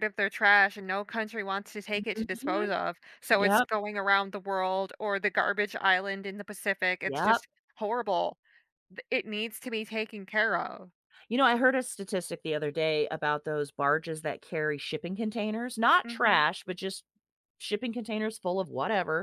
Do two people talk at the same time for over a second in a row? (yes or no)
no